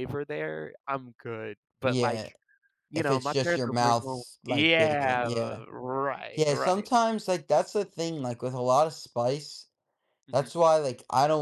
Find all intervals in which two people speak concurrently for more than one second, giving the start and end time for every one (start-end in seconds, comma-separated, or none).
3.0-5.3